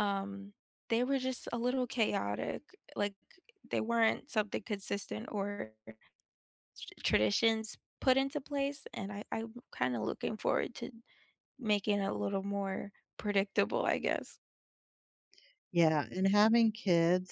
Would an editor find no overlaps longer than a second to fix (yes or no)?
yes